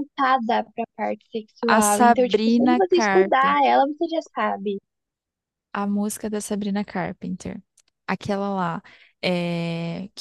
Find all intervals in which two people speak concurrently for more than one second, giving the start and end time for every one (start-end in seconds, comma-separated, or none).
1.7-3.8